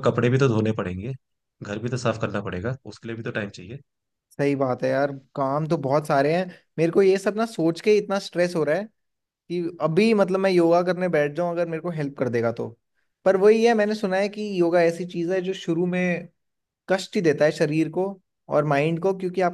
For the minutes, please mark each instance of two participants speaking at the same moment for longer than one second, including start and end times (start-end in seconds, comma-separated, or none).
none